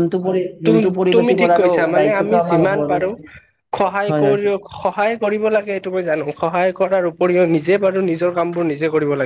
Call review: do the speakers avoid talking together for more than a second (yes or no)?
no